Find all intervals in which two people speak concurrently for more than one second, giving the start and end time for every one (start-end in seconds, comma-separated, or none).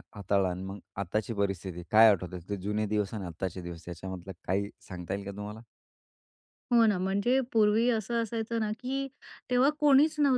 none